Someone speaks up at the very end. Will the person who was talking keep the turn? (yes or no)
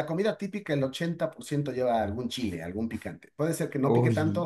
yes